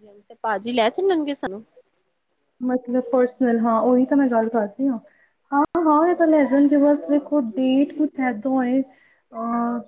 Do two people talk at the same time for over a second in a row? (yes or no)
no